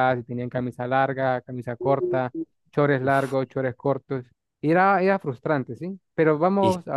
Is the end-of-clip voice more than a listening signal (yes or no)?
no